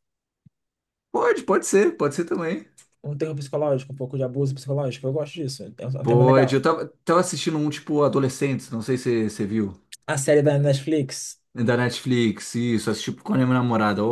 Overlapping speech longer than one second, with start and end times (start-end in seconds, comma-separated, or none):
none